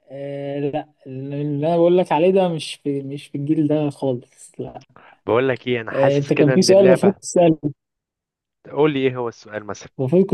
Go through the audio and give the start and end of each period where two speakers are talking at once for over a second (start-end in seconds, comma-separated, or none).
5.9-7.1